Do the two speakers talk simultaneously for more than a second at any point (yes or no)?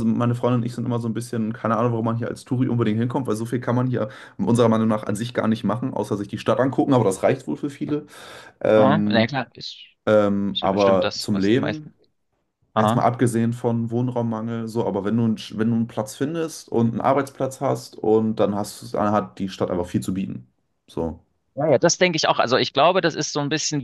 yes